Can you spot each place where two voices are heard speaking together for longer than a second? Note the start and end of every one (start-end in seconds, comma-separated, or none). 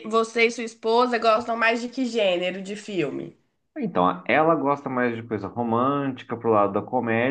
none